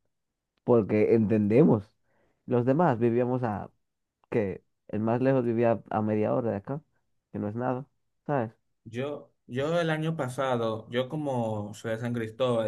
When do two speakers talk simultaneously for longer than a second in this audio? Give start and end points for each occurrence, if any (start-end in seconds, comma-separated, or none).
none